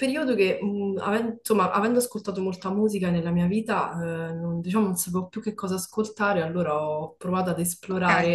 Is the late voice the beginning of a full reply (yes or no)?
no